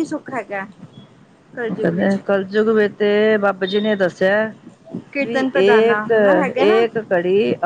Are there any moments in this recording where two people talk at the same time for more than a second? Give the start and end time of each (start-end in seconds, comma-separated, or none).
5.2-6.8